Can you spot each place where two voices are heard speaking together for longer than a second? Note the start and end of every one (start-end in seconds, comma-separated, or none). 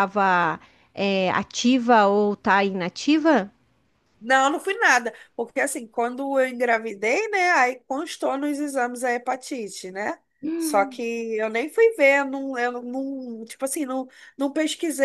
none